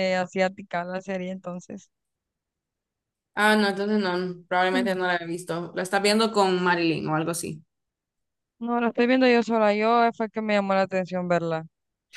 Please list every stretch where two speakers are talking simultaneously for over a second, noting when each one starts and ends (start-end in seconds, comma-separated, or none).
none